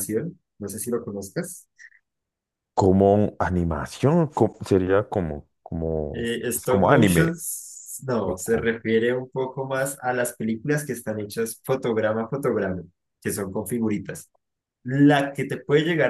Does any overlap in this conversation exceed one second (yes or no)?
yes